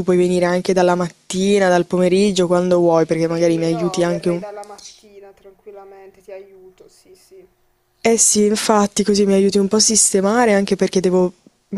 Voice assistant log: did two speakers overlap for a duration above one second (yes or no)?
yes